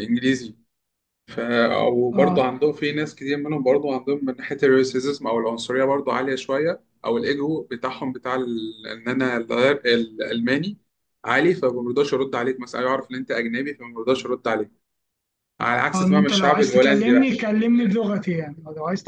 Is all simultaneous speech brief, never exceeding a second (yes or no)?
no